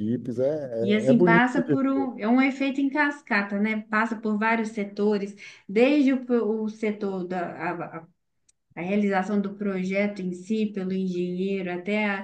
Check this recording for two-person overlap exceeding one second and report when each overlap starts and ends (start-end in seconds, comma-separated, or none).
0.8-2.0